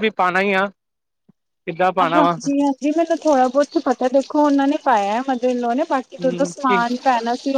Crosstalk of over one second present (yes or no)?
no